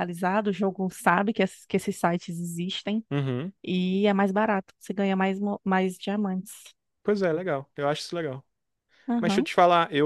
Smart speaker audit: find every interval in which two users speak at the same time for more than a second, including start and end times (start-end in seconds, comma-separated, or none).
none